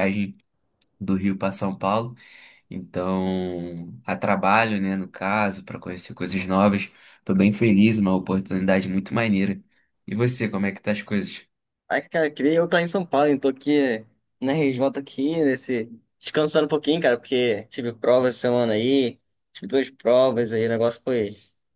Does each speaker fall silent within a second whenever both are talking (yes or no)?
yes